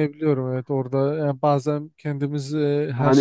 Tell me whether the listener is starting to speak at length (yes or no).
yes